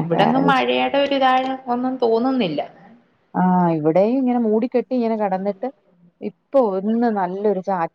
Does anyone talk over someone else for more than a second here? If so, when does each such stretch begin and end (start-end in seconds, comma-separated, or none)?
none